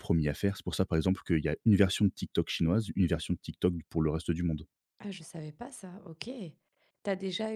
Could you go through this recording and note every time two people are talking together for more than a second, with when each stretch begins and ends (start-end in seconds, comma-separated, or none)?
none